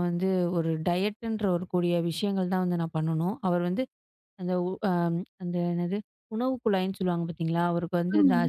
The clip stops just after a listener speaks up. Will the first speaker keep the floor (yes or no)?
yes